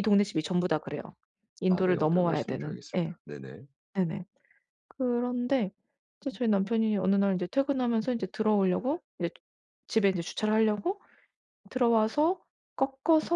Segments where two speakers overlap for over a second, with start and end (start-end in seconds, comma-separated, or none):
1.7-3.1